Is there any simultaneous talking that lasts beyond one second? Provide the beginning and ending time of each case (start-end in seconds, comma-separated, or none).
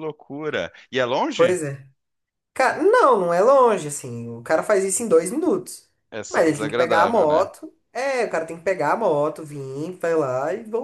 6.3-7.5